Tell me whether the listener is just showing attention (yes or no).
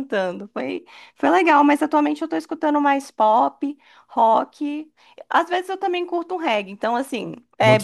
yes